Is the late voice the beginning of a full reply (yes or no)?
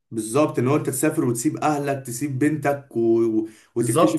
yes